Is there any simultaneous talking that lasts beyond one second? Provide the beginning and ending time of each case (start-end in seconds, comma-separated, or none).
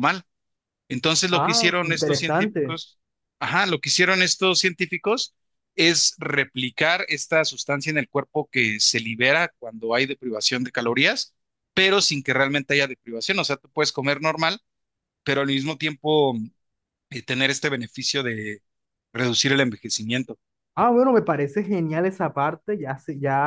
1.3-2.8